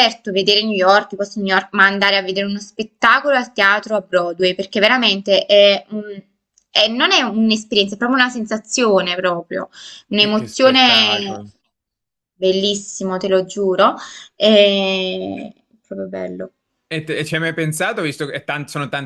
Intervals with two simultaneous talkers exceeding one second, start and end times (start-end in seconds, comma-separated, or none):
10.2-11.4